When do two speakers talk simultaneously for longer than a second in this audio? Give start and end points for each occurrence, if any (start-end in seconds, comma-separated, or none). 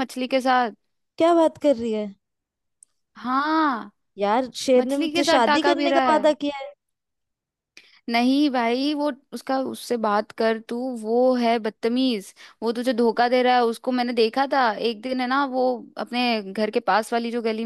4.8-6.2